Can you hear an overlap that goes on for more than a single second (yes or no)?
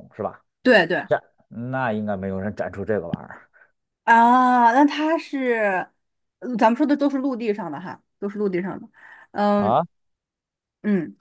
no